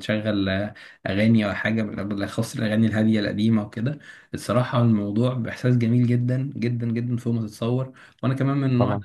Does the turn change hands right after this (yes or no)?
no